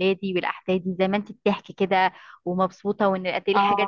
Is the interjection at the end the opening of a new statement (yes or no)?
no